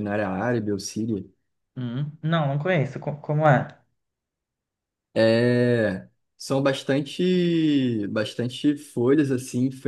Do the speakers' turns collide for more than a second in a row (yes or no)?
no